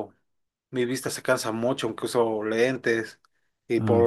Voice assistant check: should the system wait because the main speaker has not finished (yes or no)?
yes